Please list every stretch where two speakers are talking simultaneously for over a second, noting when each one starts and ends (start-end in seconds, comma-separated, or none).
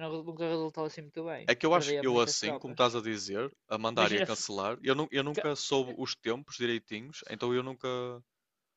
1.4-2.8